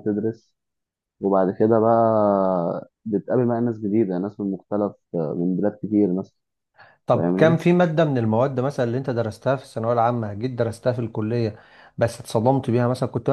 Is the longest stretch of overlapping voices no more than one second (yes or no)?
yes